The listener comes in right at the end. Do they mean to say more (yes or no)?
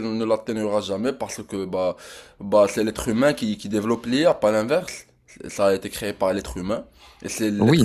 yes